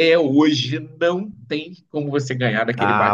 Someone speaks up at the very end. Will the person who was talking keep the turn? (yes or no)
no